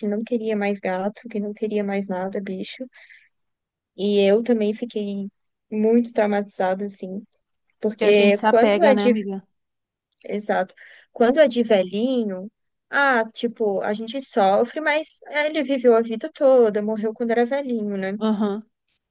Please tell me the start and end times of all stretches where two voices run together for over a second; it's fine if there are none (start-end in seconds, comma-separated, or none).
7.9-9.1